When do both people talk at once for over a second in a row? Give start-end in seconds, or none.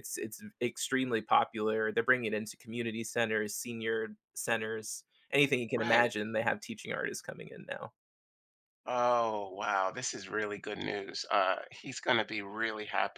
none